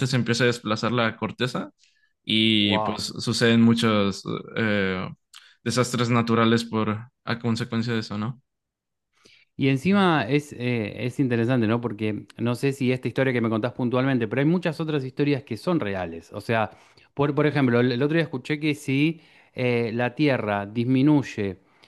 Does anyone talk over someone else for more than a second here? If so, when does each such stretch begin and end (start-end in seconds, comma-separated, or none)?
none